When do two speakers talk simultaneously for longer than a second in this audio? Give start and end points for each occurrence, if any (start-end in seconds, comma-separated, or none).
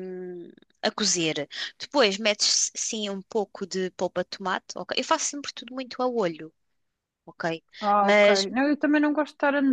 none